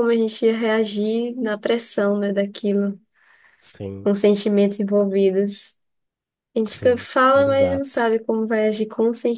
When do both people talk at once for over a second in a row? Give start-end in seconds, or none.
6.7-8.1